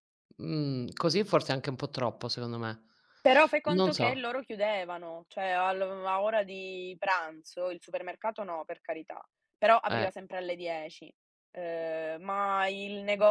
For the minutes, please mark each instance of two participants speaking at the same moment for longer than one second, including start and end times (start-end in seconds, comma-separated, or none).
none